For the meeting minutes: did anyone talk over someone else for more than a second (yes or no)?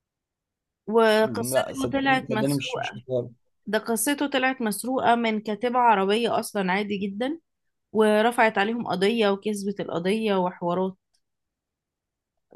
yes